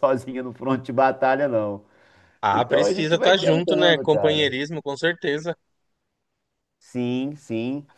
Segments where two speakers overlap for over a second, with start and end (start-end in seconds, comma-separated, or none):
2.5-4.5